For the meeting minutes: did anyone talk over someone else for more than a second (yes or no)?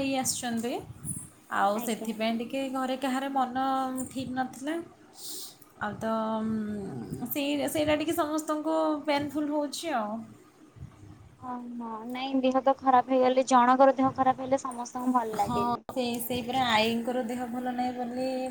no